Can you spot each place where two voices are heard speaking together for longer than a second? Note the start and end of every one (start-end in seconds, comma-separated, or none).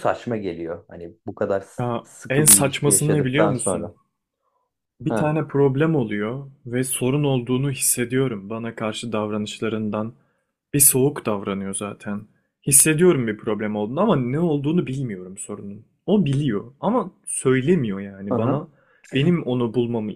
1.8-3.9